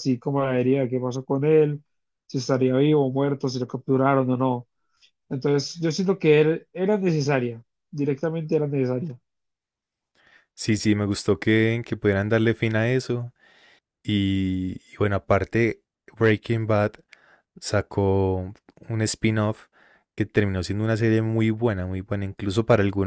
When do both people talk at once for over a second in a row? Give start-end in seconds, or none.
none